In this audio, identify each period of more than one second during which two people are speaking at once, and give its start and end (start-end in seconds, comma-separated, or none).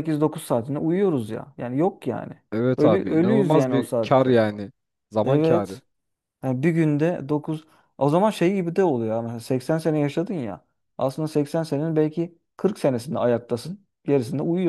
2.8-4.4